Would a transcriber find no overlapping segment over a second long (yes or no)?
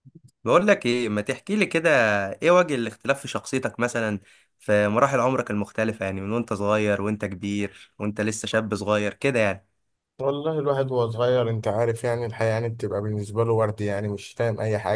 yes